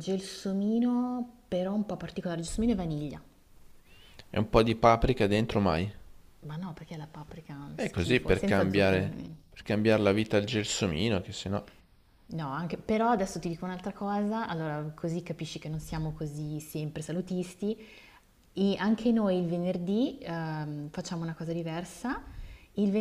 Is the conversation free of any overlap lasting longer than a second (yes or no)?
no